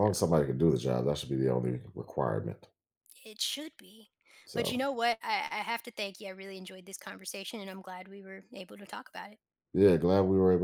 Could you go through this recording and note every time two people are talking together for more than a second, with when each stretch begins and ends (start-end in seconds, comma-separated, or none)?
none